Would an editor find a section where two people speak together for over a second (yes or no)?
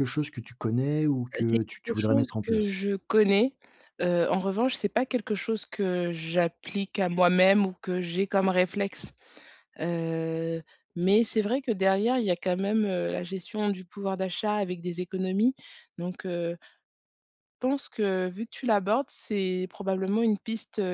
yes